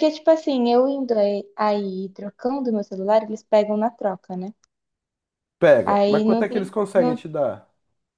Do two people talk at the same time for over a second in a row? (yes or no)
yes